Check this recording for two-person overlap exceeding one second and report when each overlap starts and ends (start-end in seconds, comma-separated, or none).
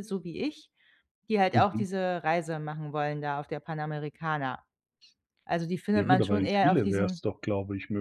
5.9-7.2